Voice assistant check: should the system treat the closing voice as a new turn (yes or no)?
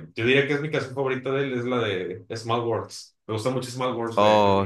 yes